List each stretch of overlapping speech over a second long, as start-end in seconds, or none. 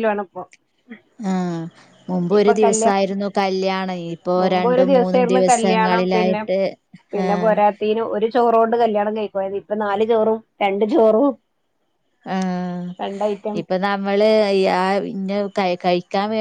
4.4-6.4